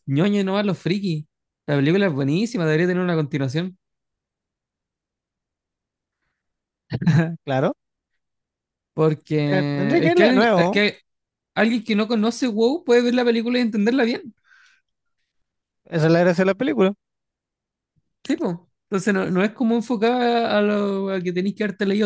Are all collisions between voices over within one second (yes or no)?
no